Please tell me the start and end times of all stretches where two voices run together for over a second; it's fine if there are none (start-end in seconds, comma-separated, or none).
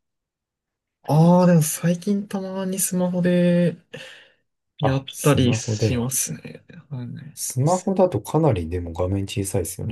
4.8-6.1